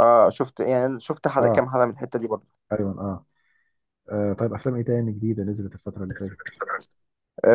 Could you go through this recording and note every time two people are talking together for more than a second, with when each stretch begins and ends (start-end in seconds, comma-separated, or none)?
none